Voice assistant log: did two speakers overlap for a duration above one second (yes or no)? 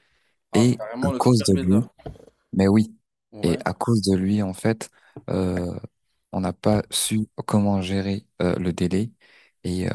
yes